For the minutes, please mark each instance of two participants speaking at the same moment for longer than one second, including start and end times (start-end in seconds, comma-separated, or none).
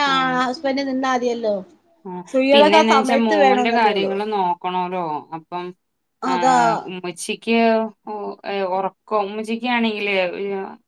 2.5-4.1